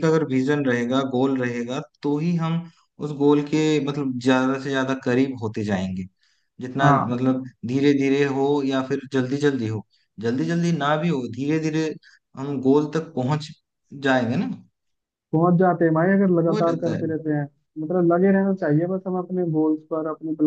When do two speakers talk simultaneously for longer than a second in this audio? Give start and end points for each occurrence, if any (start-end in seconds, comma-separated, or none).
none